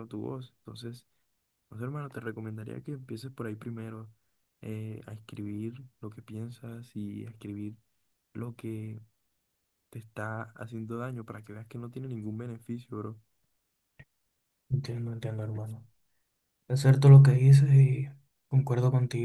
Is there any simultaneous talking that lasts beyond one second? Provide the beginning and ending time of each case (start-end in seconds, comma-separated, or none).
none